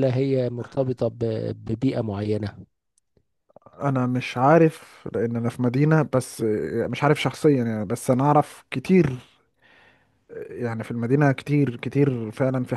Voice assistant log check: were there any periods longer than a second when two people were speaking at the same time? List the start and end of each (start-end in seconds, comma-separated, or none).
none